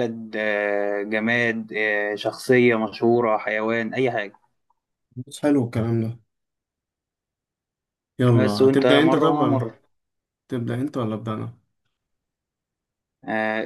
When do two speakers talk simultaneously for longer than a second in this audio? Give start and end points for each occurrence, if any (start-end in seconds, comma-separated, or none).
8.4-9.6